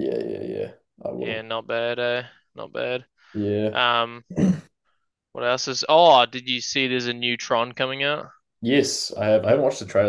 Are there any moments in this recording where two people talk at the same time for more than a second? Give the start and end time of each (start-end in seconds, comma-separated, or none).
none